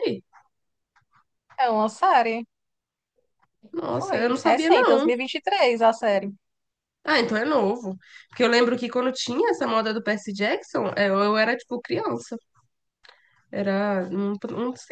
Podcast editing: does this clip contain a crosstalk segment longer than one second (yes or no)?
yes